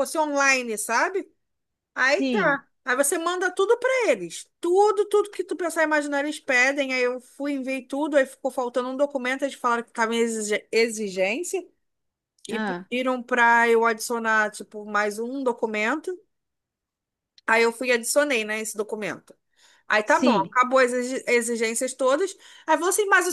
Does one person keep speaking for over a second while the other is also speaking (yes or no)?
no